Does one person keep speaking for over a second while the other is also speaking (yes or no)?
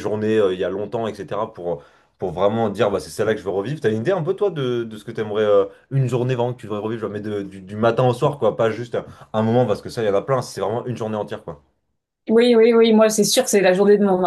no